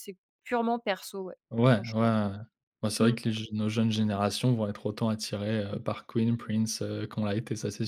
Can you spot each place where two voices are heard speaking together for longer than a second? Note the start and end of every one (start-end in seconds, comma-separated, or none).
none